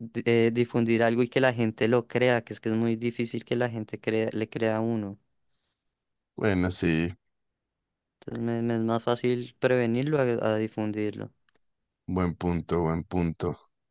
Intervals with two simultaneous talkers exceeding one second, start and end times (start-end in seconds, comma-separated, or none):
none